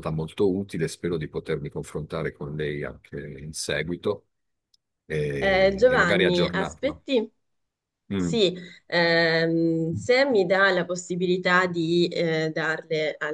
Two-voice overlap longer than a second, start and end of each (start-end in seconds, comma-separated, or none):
5.4-7.0